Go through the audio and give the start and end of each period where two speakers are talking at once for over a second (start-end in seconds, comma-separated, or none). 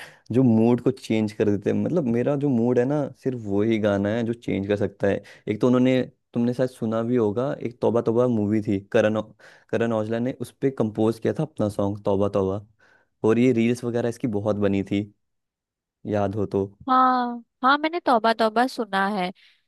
none